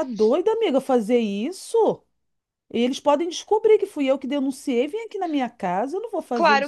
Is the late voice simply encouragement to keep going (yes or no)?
no